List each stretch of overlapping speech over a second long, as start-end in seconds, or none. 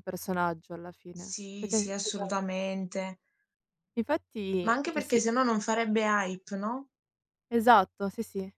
1.1-2.4